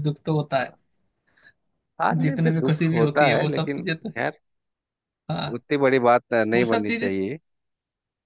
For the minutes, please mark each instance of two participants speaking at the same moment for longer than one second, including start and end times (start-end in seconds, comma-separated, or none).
2.2-4.1